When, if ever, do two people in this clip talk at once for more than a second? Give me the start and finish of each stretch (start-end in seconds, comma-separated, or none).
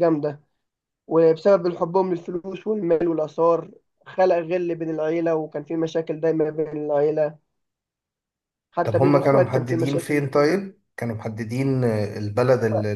8.8-10.5